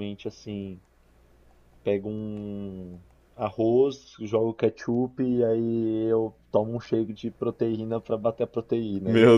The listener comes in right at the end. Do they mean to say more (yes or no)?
no